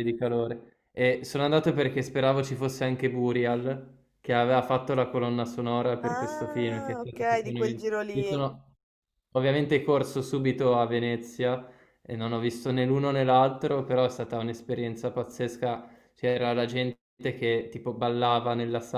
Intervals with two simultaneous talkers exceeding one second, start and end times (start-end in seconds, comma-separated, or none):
6.0-8.4